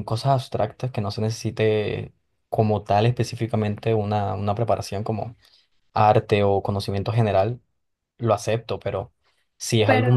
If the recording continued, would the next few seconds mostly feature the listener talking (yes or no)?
no